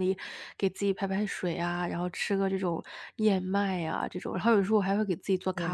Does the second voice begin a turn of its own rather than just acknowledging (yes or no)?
yes